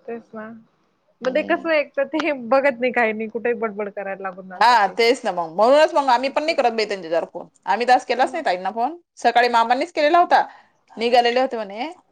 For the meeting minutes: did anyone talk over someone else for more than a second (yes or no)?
no